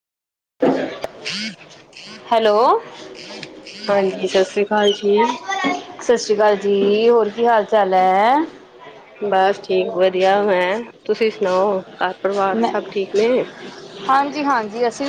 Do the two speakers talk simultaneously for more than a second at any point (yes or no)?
no